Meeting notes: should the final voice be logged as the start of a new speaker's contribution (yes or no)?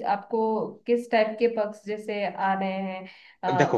no